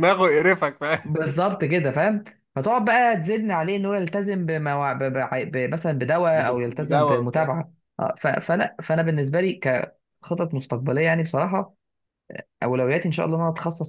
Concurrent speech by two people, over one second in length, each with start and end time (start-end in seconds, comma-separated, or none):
6.3-7.5